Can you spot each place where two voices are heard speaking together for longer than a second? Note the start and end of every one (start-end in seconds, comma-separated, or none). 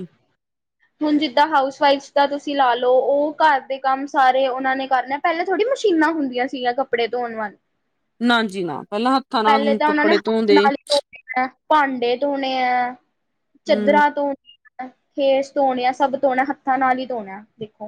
9.4-10.7